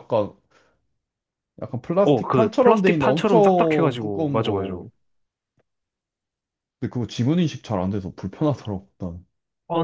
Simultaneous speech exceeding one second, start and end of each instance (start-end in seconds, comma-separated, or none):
2.0-4.7